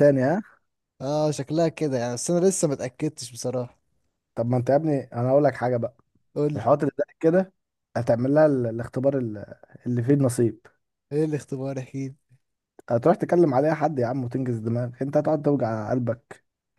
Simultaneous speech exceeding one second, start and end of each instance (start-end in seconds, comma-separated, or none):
none